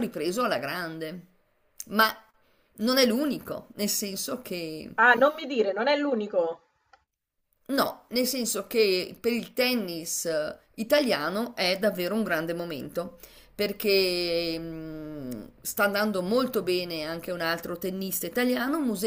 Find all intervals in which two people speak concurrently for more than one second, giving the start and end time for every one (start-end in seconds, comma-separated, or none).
none